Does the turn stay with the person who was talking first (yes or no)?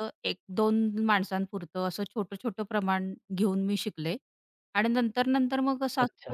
yes